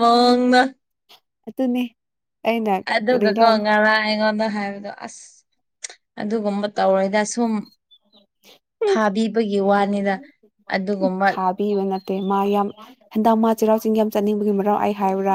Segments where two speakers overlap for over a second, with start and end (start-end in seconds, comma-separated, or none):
none